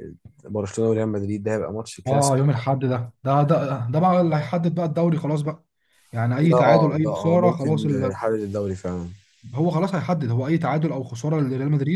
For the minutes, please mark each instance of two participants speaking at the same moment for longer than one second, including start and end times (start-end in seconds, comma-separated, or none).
6.5-8.2